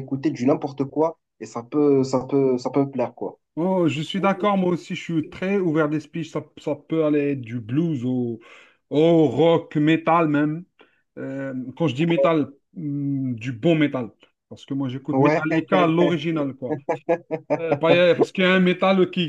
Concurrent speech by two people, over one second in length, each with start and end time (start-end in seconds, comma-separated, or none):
none